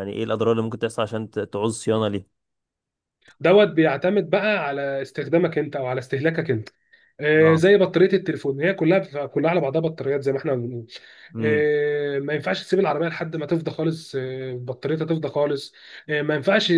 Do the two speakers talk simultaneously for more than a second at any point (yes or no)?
no